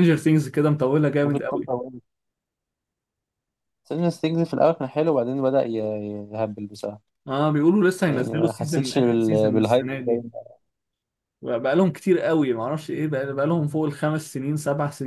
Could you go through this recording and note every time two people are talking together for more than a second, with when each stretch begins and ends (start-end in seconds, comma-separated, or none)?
8.1-10.2